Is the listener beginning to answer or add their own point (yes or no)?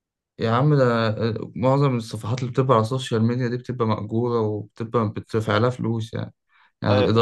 no